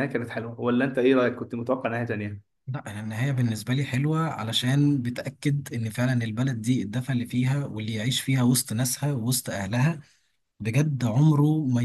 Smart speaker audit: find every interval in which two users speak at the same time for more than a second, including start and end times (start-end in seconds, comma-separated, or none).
none